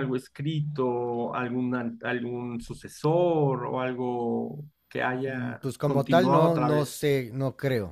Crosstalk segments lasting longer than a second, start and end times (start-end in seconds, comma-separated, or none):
5.3-7.1